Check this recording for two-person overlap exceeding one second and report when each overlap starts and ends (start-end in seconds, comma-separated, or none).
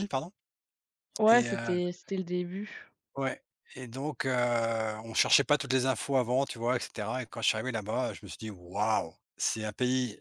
none